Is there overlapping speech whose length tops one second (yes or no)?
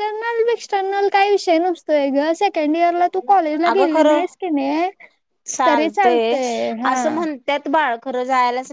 no